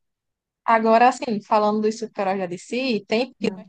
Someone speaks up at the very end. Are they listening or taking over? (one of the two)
listening